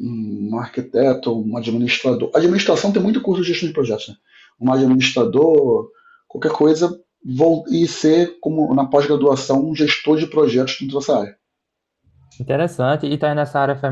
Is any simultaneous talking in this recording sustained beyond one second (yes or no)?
no